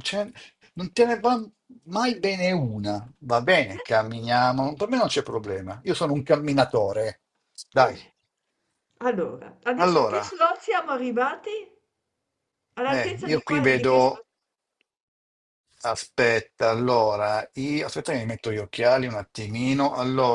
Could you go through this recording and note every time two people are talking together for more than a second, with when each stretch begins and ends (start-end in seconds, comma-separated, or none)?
12.9-14.2